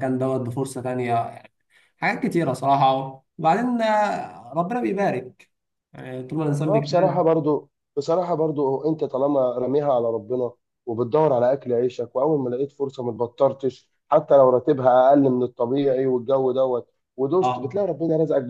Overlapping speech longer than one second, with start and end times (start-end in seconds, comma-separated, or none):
none